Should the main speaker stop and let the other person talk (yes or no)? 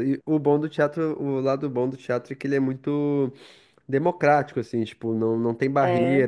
no